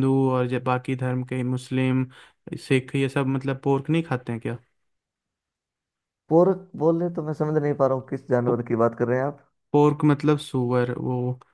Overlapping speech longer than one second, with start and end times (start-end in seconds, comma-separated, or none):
none